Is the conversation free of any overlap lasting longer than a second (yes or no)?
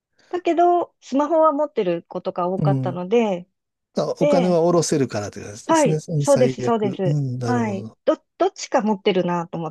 no